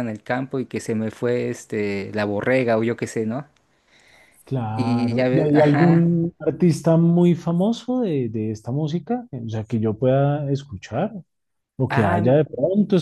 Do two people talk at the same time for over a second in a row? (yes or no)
yes